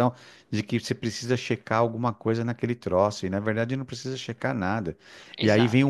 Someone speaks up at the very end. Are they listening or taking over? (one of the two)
listening